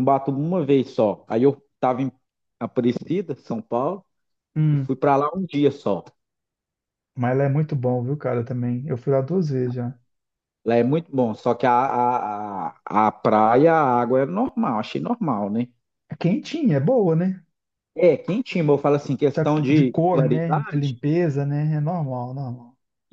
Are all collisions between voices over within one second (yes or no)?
no